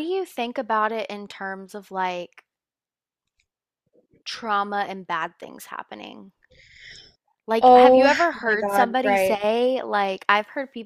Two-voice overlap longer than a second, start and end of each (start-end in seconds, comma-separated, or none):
7.6-9.4